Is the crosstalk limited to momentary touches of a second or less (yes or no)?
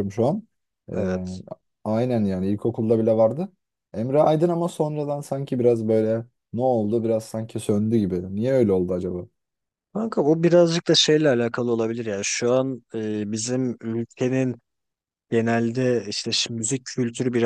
yes